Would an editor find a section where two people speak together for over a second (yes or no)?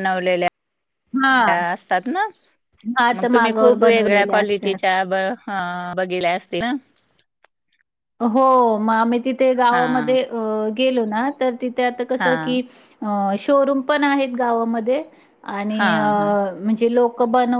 yes